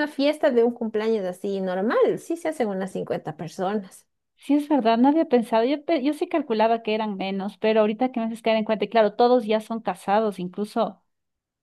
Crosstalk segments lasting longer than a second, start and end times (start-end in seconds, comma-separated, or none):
none